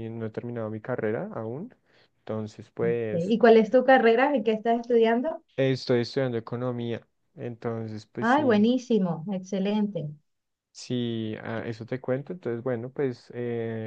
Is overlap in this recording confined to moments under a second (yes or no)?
yes